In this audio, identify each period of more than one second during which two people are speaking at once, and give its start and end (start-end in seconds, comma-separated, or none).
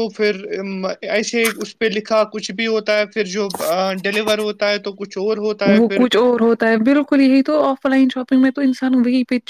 none